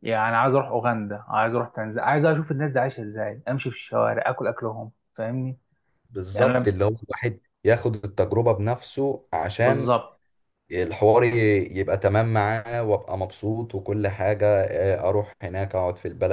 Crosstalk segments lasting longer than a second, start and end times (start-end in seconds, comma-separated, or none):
none